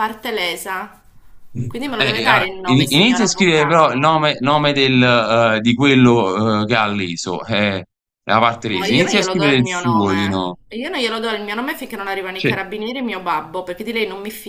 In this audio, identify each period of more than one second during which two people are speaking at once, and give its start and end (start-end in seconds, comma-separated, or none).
2.0-4.2, 8.7-10.6